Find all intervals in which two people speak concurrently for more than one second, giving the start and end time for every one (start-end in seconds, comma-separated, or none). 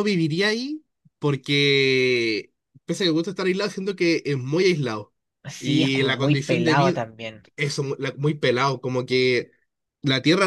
5.6-7.0